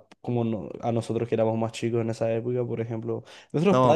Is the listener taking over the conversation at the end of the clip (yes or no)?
no